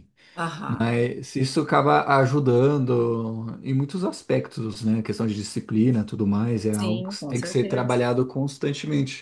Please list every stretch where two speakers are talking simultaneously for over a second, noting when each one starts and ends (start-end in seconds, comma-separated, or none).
6.7-8.0